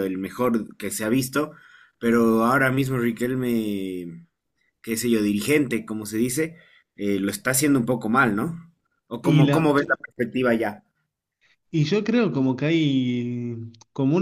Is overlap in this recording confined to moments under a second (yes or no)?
yes